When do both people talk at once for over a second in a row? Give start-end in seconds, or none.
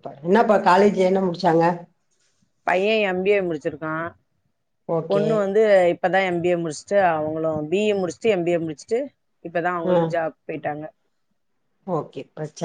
none